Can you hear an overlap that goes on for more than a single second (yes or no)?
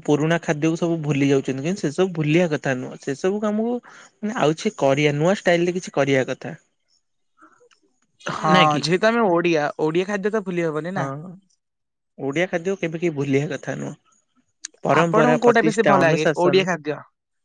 yes